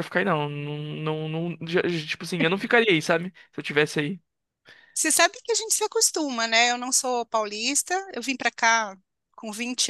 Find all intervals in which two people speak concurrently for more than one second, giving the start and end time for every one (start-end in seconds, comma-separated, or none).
none